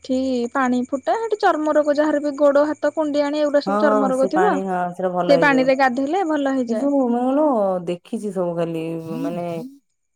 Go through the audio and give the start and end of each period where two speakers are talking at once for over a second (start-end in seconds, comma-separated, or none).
none